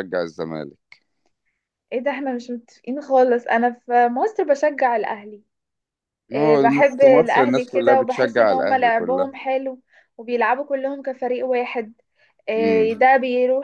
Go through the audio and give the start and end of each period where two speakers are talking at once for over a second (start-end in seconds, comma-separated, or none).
6.3-9.3